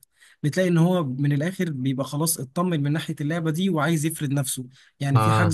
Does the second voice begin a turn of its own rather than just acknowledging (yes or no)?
no